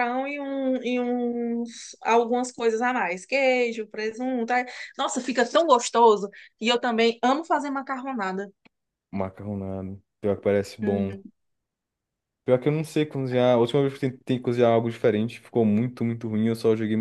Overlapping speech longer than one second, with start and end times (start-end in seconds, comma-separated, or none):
none